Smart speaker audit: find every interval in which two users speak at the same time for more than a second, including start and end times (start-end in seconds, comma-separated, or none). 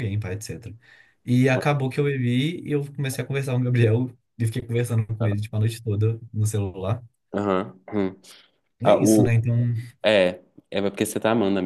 none